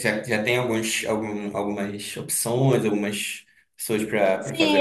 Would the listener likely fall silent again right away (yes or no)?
no